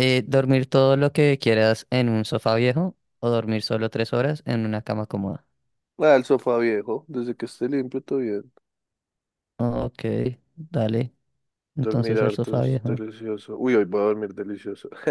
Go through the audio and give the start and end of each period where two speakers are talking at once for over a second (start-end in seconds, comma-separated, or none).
11.8-13.0